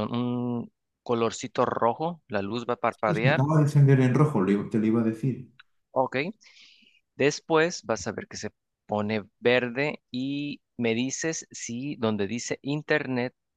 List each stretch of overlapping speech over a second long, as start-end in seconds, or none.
none